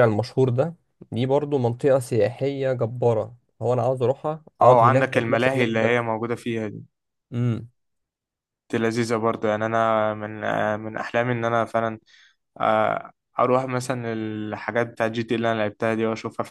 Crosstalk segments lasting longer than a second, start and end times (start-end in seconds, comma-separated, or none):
4.6-6.0